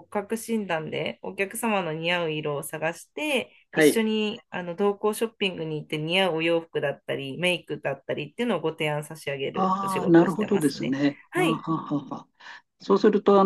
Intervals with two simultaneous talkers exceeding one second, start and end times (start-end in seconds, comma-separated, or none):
9.5-11.7